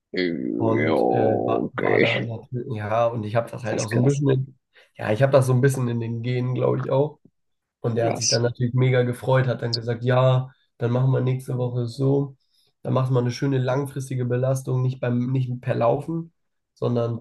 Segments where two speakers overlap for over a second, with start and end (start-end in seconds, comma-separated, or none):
0.6-2.3